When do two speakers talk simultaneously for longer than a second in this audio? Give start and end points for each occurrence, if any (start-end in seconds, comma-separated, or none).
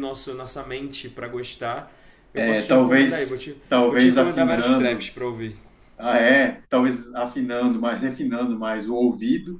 2.4-5.1